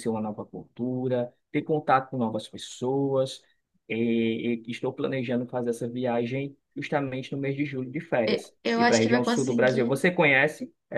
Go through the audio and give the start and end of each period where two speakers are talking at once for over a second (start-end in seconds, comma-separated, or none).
8.3-9.9